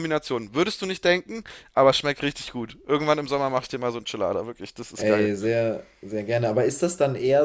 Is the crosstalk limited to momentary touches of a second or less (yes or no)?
yes